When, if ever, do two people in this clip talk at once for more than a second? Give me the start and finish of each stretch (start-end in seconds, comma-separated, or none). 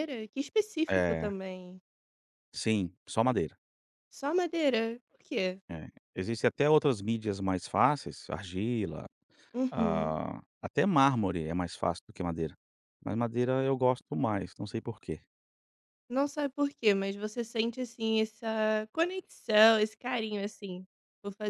none